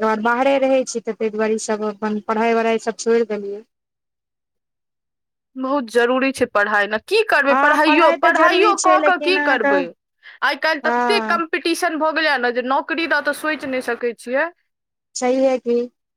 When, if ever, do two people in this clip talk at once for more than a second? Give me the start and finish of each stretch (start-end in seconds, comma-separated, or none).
7.5-9.7